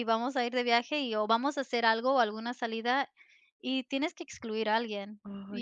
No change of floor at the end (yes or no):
yes